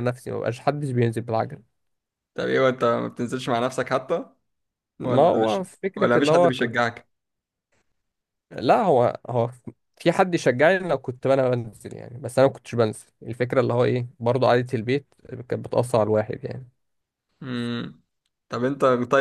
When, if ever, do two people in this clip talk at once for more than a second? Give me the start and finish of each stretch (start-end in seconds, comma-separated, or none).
5.0-6.8